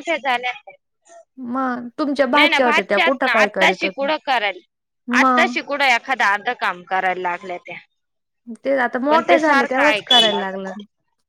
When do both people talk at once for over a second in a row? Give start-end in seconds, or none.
2.3-4.1, 9.1-10.4